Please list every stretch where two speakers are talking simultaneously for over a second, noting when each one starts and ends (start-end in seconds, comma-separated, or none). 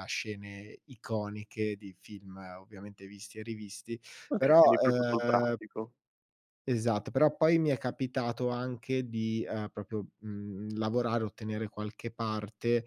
4.3-5.6